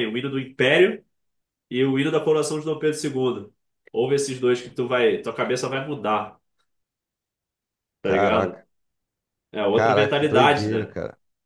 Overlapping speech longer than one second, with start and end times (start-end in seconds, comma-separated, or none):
9.7-11.0